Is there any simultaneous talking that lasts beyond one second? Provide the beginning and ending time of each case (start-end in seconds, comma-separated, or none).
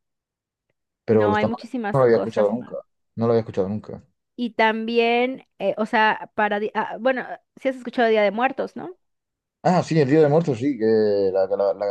1.1-2.7